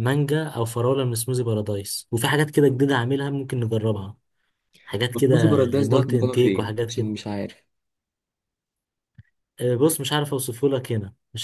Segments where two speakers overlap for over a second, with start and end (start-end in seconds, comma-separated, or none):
5.1-7.1